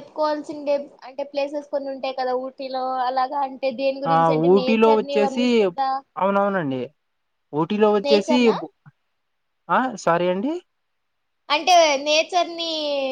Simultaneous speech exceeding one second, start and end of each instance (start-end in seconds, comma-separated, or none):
none